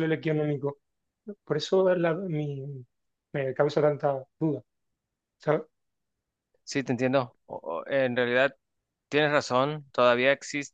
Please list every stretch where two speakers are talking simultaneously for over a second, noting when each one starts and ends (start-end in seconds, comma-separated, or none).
none